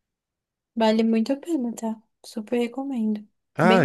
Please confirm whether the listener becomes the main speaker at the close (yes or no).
yes